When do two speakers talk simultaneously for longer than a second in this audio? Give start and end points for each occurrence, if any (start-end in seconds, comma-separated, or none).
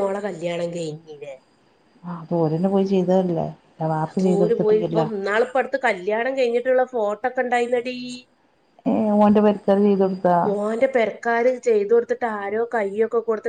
none